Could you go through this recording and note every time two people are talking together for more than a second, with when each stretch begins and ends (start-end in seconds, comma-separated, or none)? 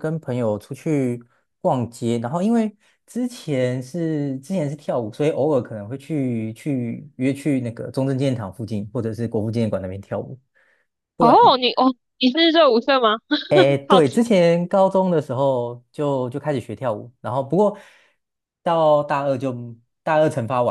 none